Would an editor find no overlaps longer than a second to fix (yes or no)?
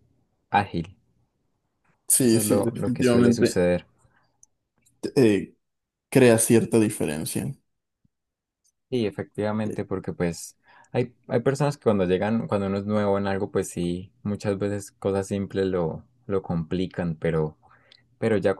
no